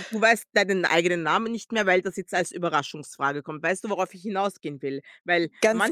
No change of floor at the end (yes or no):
yes